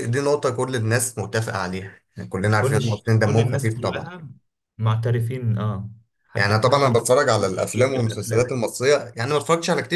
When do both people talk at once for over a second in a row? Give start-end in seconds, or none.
2.6-4.1, 6.3-8.5